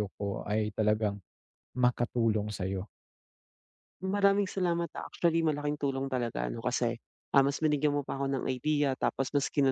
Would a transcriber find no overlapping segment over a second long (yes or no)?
yes